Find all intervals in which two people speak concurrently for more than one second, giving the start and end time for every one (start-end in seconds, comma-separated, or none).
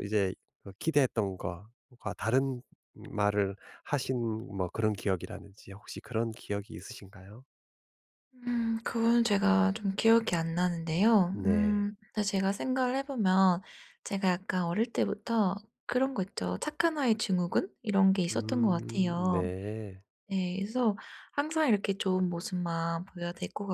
18.3-19.5